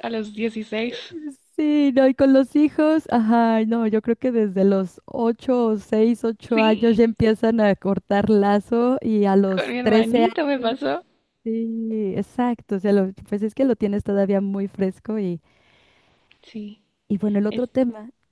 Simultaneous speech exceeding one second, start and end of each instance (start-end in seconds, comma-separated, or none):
9.6-10.8